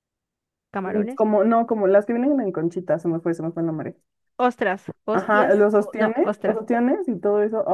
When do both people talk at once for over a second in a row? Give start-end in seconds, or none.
5.1-6.6